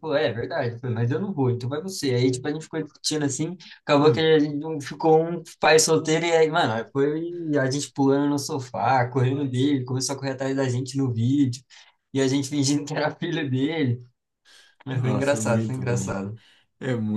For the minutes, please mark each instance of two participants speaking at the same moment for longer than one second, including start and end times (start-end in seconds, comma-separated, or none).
14.9-16.2